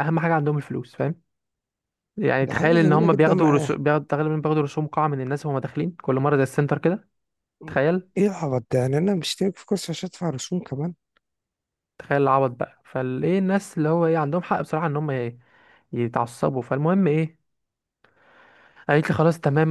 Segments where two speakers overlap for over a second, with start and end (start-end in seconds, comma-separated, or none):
2.4-3.8